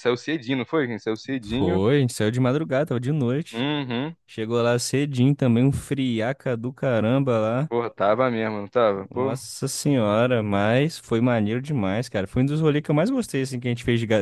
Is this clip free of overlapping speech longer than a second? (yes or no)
yes